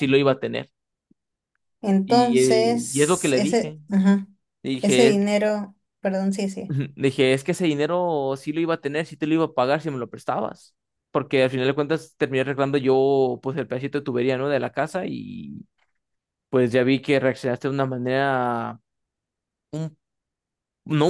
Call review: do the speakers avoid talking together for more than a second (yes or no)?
no